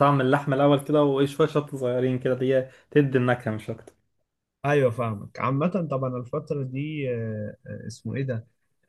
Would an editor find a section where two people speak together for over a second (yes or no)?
no